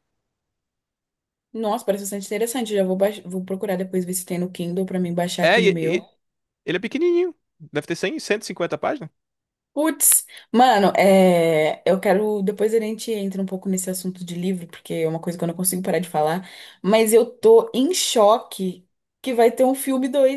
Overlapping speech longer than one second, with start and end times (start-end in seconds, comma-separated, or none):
none